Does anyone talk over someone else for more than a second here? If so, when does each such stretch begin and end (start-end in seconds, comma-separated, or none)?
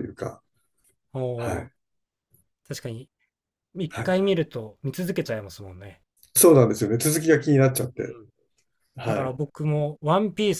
none